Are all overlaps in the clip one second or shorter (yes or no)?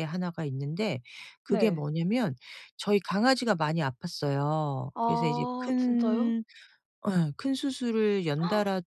no